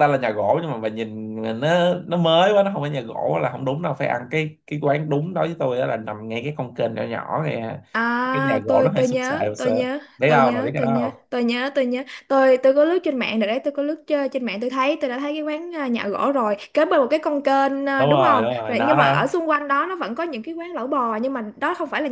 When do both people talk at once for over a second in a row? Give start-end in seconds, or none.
8.3-11.3, 18.0-19.3